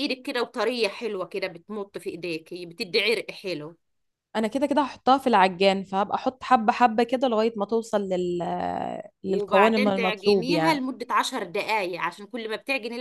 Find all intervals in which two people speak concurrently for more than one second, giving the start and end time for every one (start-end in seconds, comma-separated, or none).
9.3-10.8